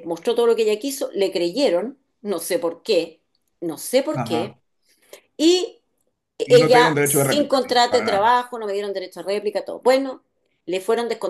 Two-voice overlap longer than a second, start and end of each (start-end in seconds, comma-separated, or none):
6.5-8.4